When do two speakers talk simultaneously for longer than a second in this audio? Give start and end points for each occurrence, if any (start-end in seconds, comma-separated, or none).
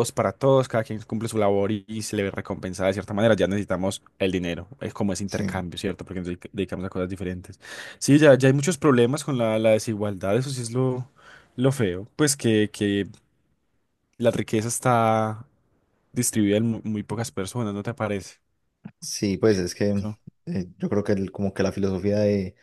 none